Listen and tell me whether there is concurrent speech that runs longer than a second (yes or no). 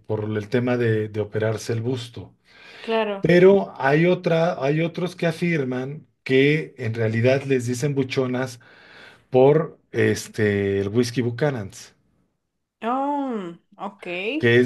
no